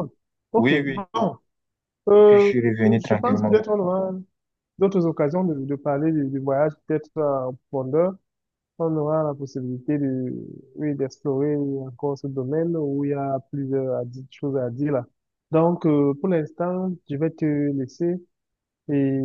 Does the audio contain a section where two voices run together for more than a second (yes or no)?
yes